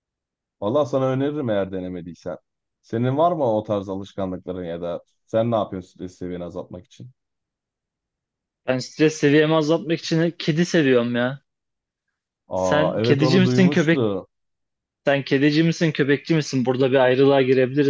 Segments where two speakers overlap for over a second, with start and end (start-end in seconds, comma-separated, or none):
12.6-14.0